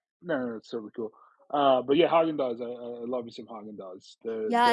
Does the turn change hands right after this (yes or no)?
yes